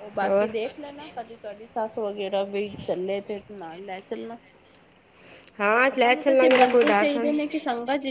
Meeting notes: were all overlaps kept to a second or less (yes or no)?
no